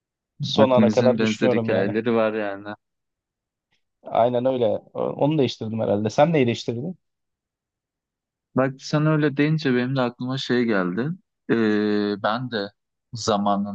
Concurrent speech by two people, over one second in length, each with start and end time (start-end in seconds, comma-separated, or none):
0.6-1.9